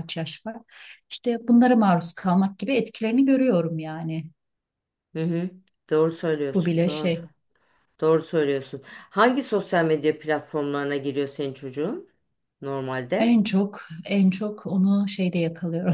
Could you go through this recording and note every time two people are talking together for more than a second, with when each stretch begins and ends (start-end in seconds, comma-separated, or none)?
none